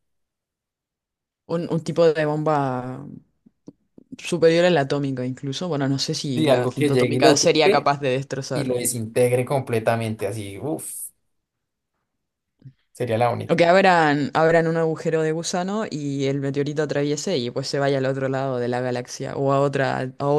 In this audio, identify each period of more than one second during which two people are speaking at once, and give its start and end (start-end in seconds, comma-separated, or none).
6.3-7.9